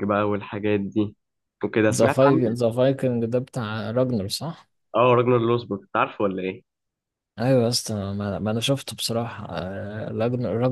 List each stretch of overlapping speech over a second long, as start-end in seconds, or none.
none